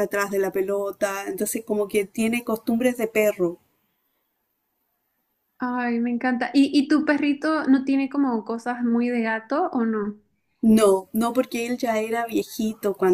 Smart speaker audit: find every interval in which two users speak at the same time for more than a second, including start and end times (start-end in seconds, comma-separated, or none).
none